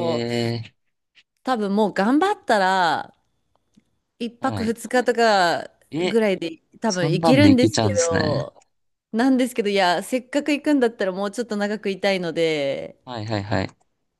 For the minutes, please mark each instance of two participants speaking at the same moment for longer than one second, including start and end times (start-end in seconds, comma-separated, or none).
6.9-8.5